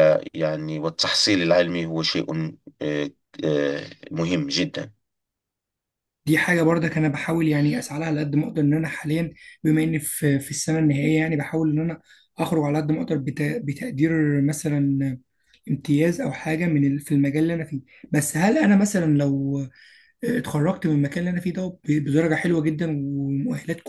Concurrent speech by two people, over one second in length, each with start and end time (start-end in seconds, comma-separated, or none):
none